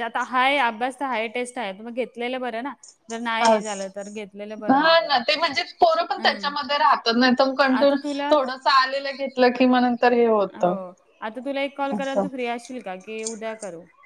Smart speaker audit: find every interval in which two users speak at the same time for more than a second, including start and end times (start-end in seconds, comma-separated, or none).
none